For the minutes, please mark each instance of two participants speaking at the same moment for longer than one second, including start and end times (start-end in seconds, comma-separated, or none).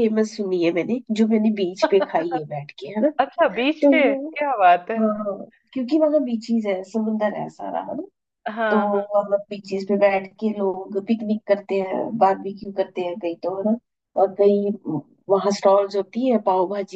none